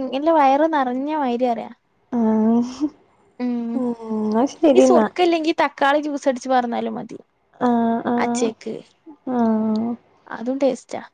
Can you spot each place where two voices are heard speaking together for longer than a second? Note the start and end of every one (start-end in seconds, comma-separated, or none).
none